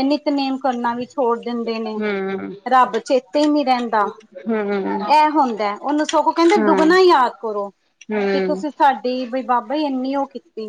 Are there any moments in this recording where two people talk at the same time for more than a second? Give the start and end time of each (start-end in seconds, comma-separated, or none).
none